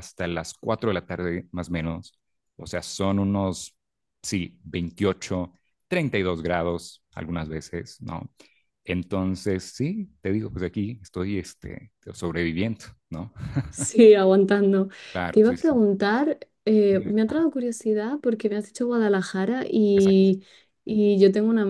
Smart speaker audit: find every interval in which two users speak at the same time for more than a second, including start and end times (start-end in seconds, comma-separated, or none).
none